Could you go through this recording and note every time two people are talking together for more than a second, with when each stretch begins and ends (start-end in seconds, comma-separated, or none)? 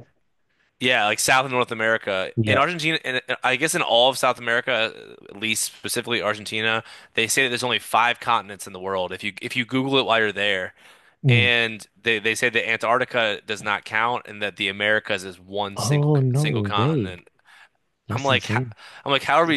15.8-17.2